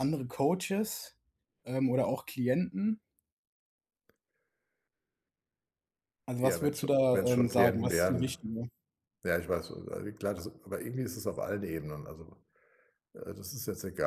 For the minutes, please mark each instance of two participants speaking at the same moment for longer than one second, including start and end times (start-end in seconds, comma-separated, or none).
6.4-8.4